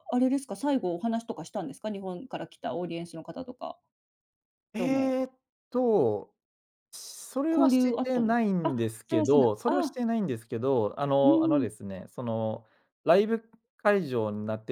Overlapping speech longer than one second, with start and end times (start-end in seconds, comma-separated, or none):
7.5-10.0